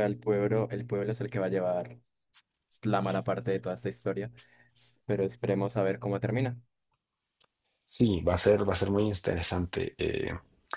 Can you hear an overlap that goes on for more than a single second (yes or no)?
no